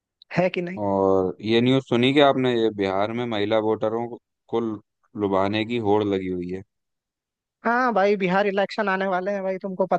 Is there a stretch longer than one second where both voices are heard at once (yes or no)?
no